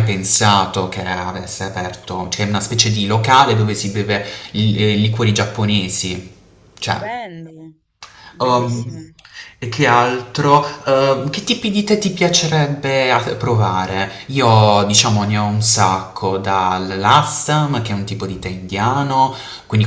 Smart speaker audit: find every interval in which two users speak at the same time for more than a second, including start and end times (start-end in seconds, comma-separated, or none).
none